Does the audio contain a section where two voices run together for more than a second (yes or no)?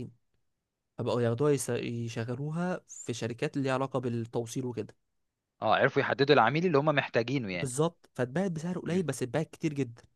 no